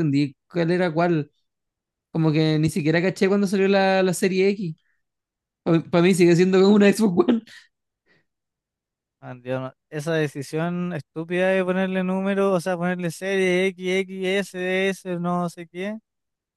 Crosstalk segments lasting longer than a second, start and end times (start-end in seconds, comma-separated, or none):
none